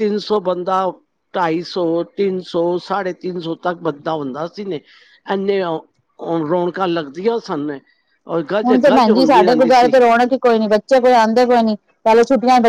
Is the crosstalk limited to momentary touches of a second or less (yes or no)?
yes